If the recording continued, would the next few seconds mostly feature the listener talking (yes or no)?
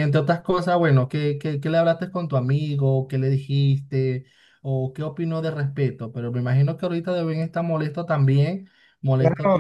yes